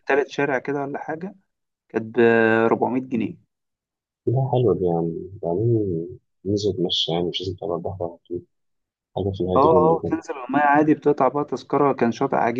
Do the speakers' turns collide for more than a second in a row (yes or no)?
no